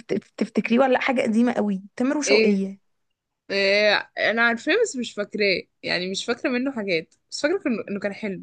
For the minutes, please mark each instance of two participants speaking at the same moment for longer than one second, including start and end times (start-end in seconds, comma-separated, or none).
none